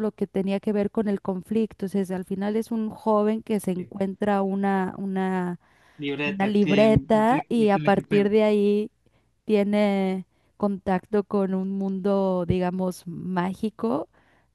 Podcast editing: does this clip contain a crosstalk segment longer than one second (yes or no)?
yes